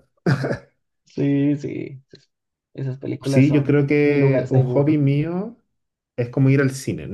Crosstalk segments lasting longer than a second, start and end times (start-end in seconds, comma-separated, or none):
3.2-5.0